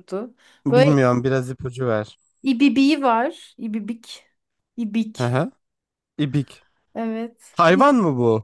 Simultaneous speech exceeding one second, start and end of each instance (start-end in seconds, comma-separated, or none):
none